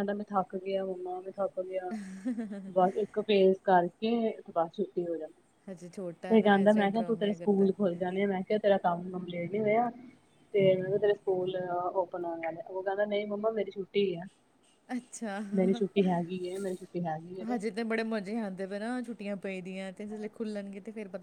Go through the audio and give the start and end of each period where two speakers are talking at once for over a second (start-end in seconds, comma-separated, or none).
6.3-7.8